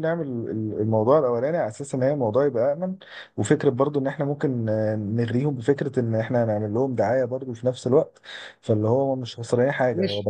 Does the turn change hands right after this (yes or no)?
yes